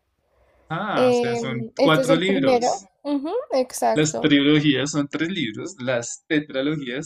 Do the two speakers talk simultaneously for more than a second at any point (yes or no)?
yes